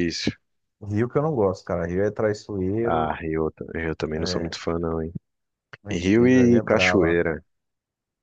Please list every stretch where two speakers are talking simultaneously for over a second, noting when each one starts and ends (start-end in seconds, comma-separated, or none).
5.9-7.2